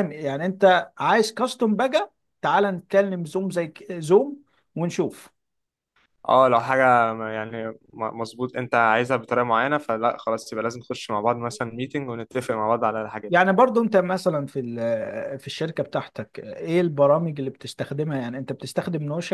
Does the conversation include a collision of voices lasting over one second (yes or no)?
no